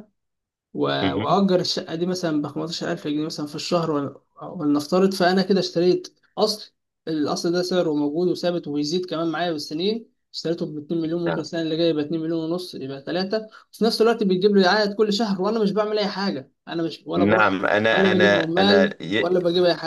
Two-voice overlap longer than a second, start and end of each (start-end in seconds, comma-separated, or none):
17.2-19.3